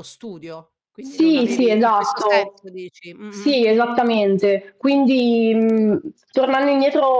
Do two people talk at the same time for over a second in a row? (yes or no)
yes